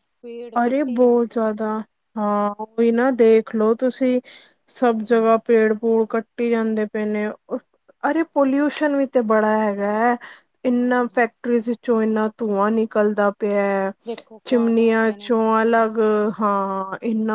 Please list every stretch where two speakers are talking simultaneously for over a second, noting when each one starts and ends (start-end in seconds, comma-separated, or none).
14.5-15.9